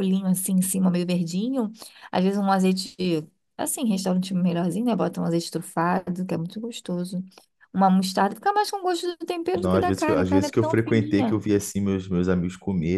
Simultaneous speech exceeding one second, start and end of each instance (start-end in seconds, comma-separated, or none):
9.5-11.4